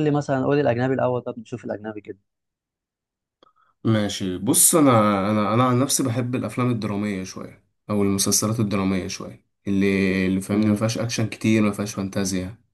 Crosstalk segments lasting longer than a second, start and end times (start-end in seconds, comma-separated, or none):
none